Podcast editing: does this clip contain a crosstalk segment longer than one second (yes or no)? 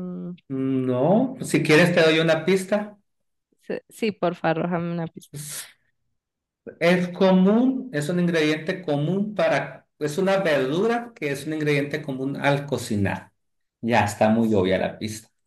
no